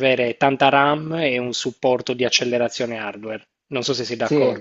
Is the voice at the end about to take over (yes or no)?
yes